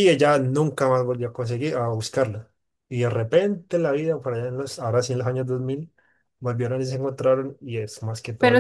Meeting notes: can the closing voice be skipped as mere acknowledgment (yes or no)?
no